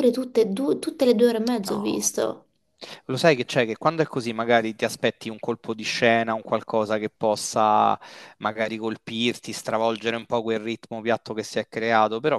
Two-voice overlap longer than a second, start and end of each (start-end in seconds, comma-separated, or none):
none